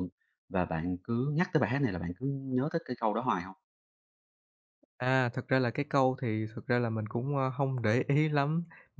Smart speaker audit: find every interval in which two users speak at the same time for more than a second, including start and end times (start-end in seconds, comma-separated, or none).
none